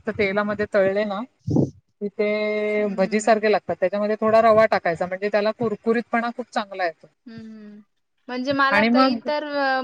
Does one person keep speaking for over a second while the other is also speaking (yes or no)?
no